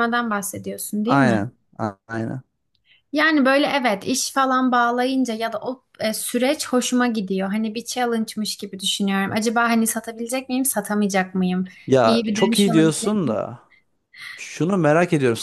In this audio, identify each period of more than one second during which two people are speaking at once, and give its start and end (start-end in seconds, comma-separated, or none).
12.0-13.4